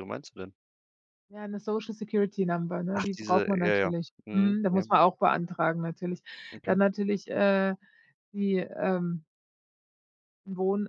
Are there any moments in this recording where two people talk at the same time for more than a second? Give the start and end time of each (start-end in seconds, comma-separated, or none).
3.0-4.8